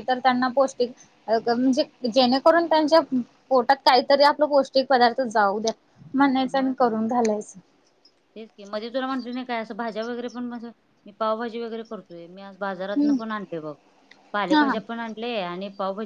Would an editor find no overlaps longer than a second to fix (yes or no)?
yes